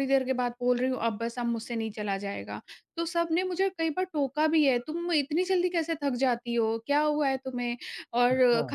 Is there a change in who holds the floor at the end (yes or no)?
no